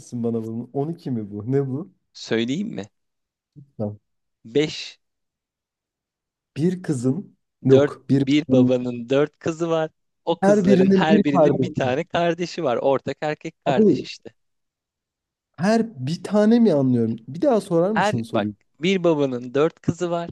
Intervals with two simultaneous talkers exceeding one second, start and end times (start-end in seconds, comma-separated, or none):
10.4-12.0